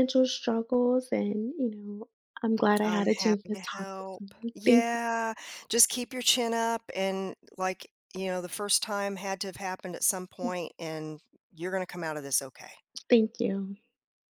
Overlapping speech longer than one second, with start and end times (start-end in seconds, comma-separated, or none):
2.8-5.0